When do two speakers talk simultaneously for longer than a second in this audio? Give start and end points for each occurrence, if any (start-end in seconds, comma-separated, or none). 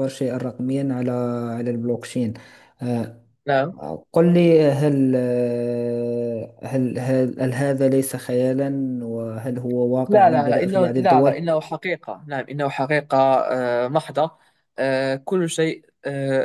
10.1-11.5